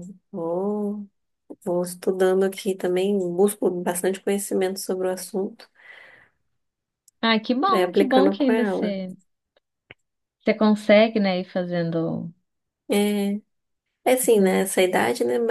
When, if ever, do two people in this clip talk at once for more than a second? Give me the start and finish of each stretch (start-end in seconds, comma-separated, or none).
7.7-9.0